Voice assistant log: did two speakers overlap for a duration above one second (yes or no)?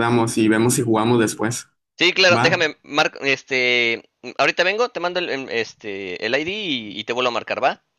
no